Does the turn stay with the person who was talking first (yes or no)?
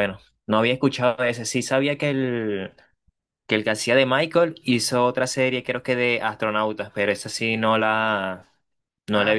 yes